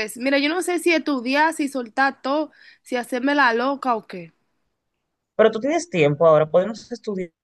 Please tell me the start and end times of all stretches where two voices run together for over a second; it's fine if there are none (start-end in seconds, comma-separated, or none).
none